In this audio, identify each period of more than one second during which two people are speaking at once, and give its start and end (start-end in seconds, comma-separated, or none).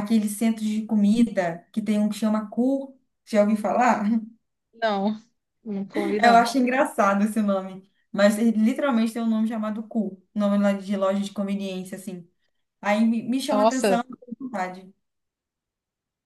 none